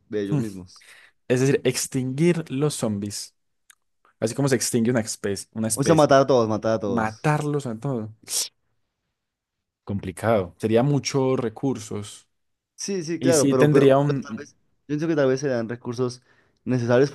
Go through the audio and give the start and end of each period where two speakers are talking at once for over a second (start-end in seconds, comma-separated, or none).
13.2-14.5